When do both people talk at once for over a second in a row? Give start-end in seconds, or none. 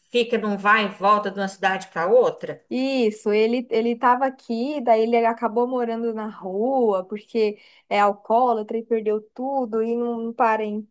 none